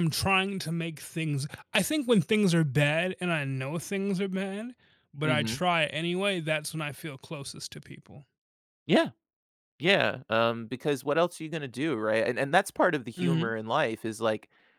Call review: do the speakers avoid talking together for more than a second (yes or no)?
yes